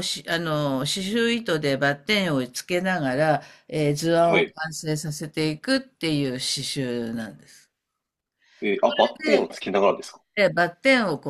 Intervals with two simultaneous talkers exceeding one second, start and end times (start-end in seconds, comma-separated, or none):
none